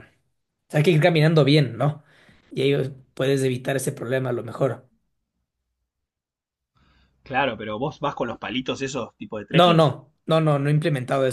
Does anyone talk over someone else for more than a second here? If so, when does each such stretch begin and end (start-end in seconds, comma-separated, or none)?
none